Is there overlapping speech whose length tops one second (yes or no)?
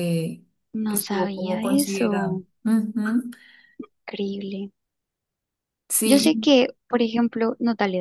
yes